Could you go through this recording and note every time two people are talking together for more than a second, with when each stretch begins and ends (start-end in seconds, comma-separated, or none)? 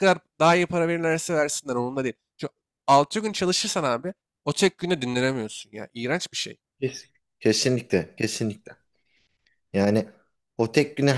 none